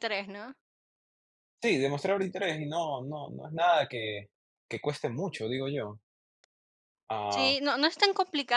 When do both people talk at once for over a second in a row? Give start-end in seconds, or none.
none